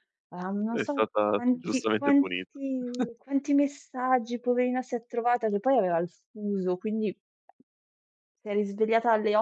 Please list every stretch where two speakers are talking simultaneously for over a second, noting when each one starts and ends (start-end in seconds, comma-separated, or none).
0.7-2.6